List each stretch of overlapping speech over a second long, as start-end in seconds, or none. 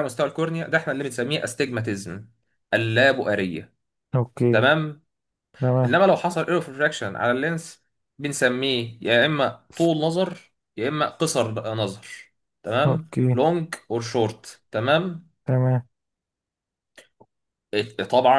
none